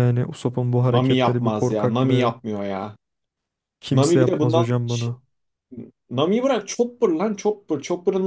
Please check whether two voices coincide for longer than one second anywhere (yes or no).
yes